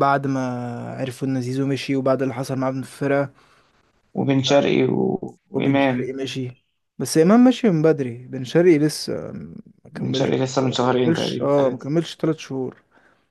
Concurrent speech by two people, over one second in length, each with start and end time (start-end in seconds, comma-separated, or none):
9.9-11.9